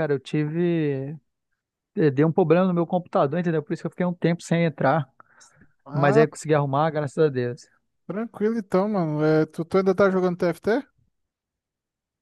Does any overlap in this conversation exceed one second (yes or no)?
no